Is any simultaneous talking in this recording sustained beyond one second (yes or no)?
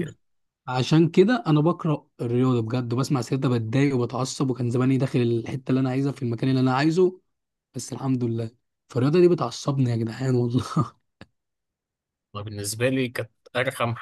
no